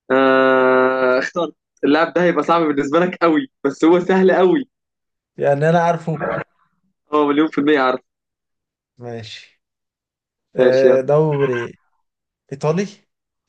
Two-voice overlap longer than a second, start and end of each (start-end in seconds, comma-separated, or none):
none